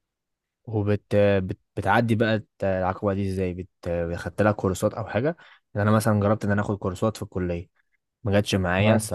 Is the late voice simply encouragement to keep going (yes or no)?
yes